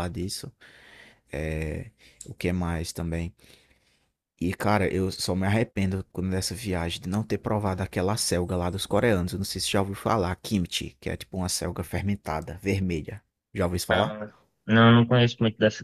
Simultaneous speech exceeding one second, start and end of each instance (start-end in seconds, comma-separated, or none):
none